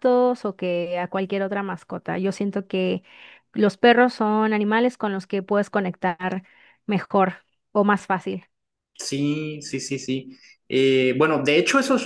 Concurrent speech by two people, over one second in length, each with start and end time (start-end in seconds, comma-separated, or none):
none